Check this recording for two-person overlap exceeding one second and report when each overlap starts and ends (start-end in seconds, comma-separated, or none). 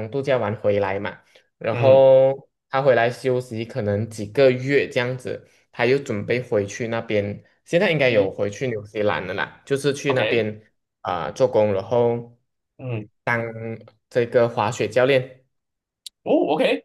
none